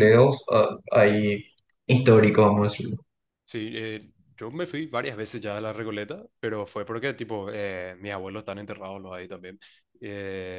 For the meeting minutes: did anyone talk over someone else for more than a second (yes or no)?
no